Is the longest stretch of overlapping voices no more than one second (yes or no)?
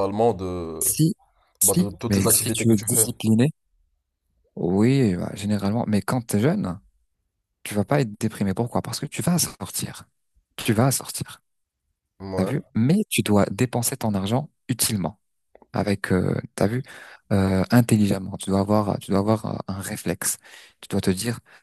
no